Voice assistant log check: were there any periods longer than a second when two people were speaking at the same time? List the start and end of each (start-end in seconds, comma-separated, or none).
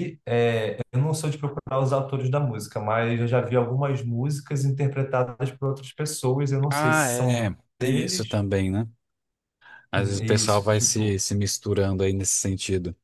6.7-8.4, 9.9-11.2